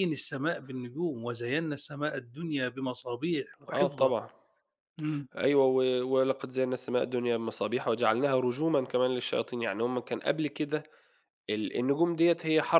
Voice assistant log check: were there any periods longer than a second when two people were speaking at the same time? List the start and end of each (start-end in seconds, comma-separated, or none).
none